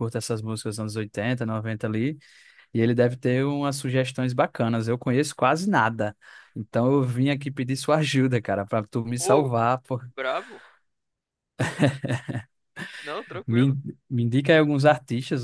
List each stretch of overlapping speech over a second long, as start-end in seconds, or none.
none